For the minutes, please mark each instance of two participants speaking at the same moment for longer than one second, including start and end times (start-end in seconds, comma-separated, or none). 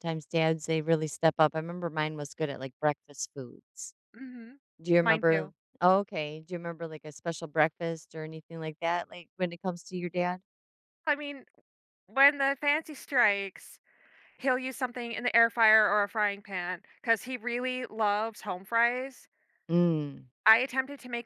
none